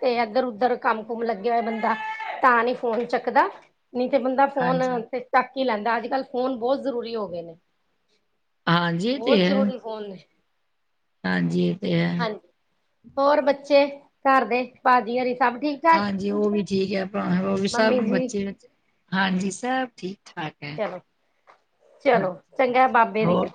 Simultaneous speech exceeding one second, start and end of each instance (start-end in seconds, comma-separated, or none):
none